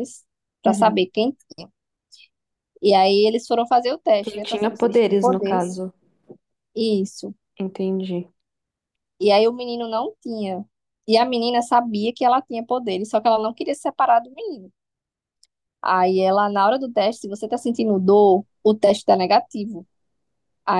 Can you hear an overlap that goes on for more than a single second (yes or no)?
yes